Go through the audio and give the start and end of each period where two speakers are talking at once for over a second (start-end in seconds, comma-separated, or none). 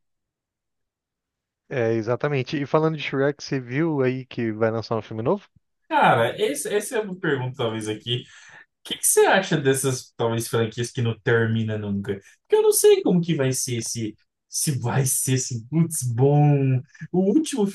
none